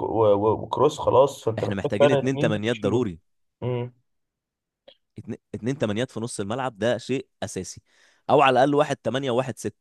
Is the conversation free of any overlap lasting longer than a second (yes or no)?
no